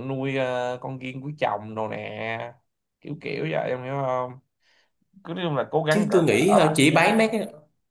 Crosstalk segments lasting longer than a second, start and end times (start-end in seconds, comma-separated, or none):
5.9-7.3